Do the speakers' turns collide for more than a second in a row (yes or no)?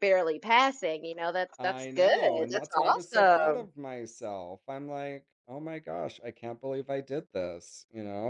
yes